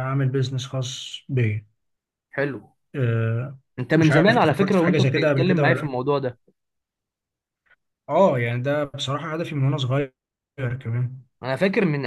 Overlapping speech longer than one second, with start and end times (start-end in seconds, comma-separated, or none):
4.0-5.9